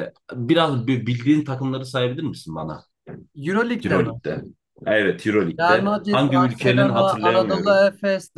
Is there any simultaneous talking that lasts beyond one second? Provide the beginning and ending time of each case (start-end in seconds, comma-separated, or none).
5.6-7.8